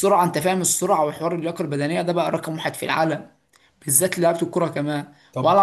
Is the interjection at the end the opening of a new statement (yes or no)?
no